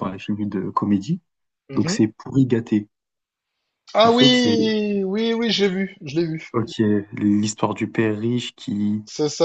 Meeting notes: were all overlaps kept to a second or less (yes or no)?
yes